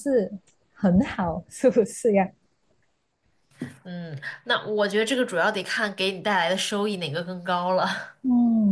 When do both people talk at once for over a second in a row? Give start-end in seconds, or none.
none